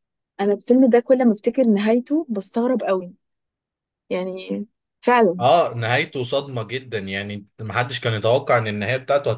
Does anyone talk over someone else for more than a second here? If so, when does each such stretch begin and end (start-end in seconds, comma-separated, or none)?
none